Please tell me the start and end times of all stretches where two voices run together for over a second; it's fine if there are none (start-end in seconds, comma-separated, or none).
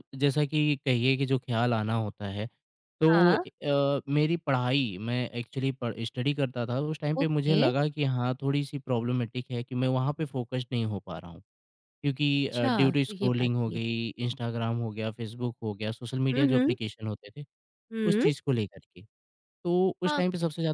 12.3-13.8